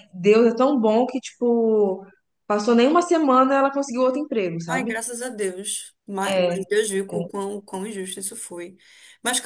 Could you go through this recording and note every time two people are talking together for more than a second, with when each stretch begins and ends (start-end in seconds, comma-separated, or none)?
none